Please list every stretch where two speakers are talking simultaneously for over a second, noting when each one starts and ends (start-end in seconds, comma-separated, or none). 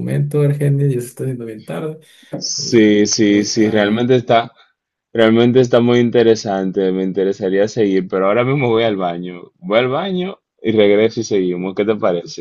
2.6-4.1